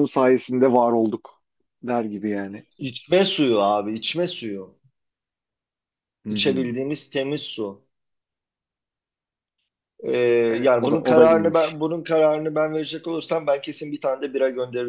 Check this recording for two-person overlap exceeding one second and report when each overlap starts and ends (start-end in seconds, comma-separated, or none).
10.6-11.8